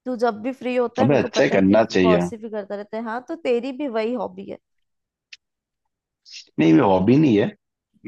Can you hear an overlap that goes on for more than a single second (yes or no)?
yes